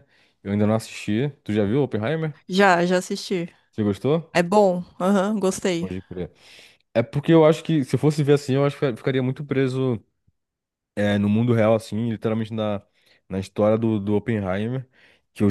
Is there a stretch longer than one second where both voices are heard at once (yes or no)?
no